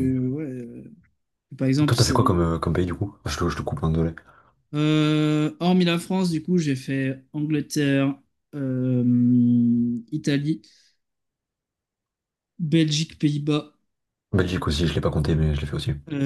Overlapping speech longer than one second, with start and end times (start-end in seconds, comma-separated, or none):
none